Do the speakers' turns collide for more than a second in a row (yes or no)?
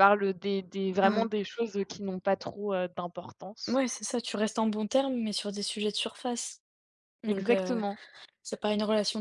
no